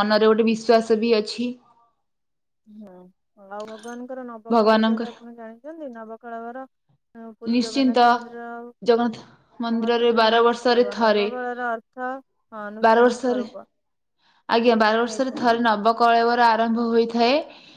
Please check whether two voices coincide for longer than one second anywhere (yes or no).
yes